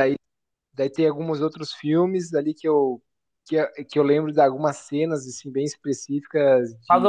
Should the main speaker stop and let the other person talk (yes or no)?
yes